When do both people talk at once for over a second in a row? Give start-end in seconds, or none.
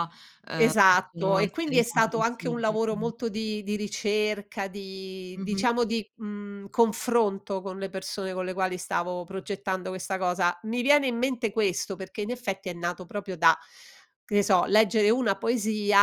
0.6-3.1